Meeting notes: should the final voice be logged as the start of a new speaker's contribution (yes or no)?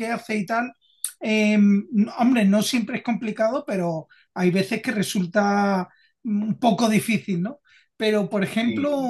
no